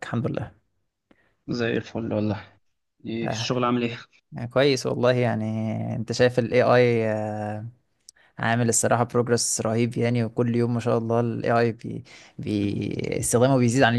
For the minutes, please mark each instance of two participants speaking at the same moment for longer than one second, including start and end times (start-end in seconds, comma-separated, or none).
none